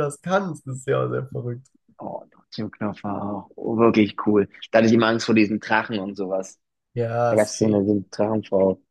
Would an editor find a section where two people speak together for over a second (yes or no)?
no